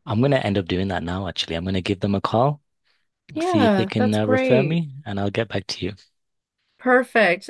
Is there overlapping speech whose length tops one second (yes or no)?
yes